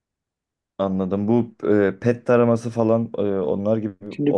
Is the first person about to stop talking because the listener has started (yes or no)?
yes